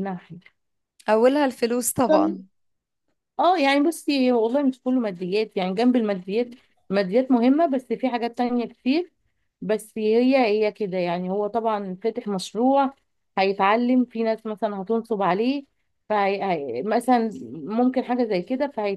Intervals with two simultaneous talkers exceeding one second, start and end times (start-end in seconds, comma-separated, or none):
none